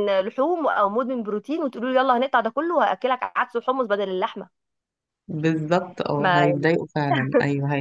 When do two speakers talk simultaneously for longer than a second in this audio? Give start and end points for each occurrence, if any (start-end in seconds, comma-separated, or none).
none